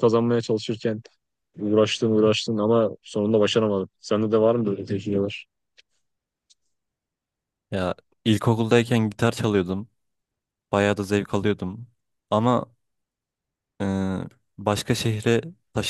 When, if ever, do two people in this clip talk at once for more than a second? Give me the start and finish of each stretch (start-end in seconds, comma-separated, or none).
none